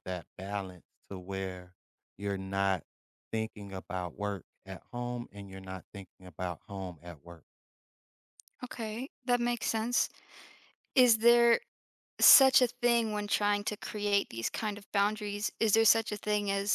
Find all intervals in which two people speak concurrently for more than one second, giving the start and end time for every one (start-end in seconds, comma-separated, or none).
none